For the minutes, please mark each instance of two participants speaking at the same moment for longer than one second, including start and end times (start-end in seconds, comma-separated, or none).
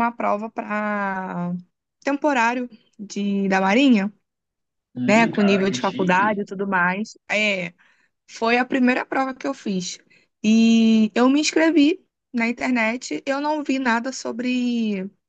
5.1-6.5